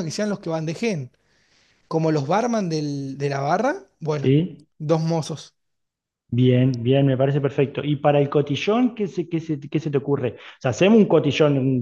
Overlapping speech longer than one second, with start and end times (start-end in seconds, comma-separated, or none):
none